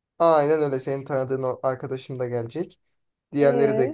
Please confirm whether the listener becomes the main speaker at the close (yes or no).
no